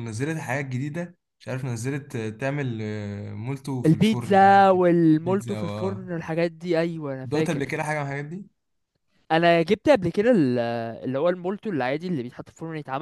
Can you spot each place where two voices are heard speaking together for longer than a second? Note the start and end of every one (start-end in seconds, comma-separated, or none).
3.9-6.1